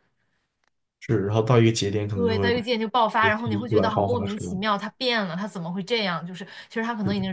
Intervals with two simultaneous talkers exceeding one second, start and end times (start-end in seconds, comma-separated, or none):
3.2-4.6